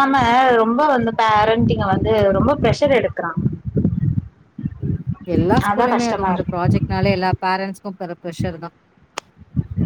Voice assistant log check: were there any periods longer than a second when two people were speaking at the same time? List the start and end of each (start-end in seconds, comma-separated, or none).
none